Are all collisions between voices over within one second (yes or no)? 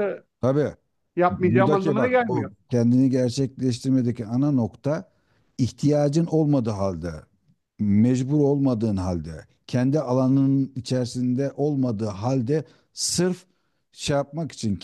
no